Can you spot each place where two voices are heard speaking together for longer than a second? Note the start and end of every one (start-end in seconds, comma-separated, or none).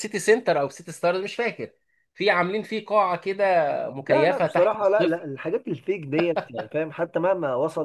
4.0-5.3